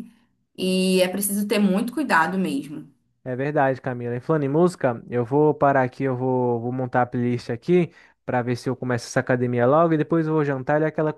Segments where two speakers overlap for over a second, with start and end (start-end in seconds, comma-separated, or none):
none